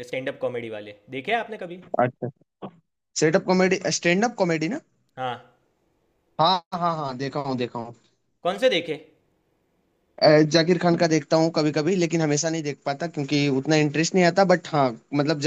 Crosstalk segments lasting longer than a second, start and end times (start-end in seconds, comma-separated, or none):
none